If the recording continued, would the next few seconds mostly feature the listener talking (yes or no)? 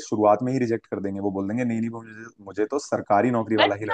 yes